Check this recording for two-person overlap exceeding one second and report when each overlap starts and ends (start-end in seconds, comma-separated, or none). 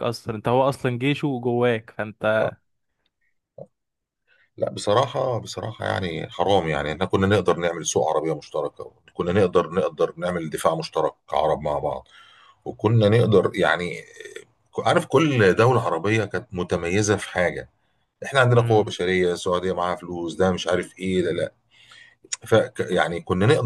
none